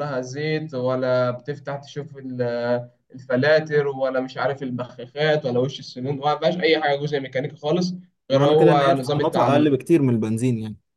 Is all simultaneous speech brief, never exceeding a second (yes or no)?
no